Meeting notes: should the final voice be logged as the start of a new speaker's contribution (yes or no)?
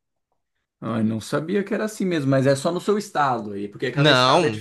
yes